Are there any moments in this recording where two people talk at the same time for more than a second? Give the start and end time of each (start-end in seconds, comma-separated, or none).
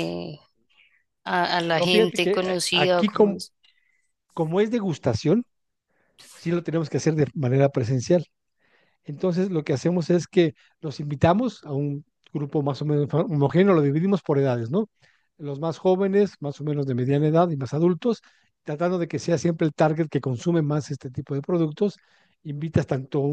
1.7-3.4